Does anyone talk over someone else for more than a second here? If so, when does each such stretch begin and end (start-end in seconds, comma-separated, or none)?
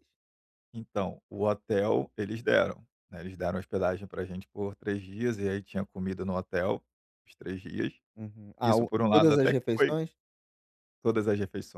8.6-9.9